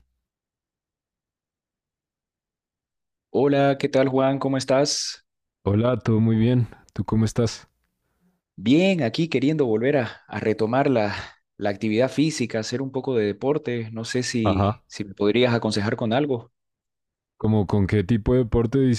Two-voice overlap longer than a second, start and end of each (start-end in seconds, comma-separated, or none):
none